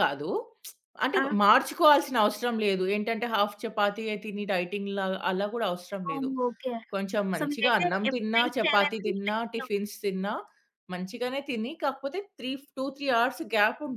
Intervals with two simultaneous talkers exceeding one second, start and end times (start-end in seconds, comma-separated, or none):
7.4-9.6